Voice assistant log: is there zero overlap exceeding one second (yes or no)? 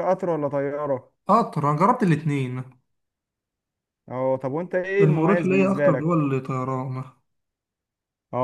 no